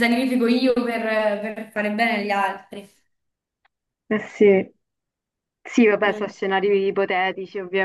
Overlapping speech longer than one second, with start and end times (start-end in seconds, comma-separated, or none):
none